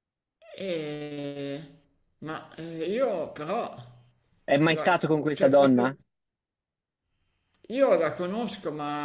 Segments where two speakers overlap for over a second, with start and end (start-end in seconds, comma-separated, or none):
4.7-6.0